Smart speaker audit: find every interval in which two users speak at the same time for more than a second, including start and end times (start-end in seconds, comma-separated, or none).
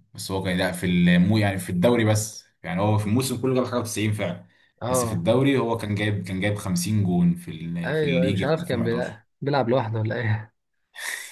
7.8-9.2